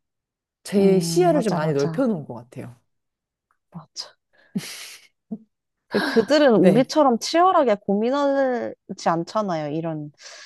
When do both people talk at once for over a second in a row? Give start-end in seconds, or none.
0.8-2.1